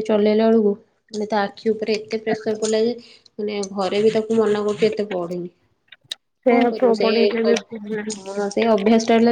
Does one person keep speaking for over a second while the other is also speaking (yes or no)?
yes